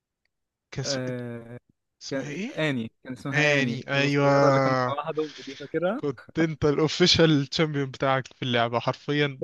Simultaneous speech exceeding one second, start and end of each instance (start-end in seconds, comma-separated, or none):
3.3-5.0